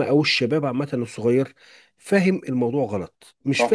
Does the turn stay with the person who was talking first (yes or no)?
yes